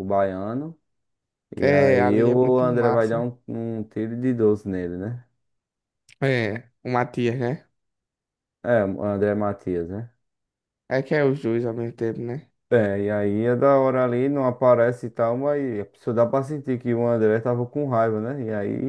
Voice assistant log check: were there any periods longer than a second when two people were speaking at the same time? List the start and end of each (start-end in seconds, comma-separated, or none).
1.6-3.2